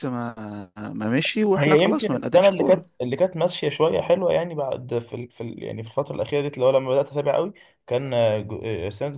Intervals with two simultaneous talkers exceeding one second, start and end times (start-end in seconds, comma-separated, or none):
1.6-2.8